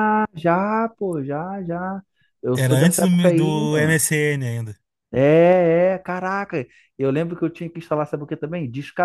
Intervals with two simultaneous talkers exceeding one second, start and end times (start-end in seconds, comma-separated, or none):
2.5-4.0